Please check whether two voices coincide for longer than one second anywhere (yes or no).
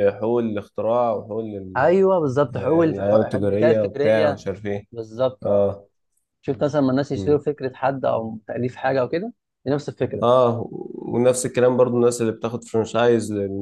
yes